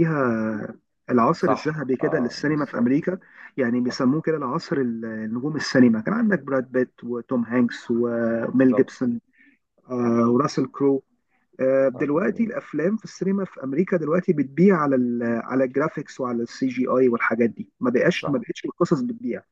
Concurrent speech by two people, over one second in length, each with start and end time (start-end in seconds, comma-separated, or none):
1.4-3.0